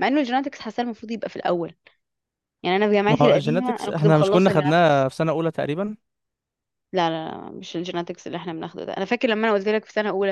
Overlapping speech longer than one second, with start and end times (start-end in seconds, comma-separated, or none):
3.1-5.1